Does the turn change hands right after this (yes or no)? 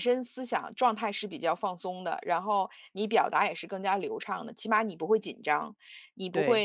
no